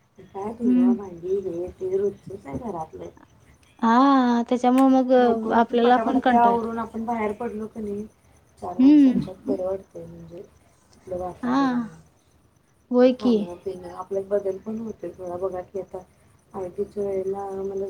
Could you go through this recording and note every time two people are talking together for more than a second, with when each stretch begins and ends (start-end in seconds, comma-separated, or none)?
none